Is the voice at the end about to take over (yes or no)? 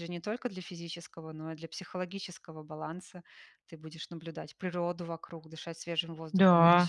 no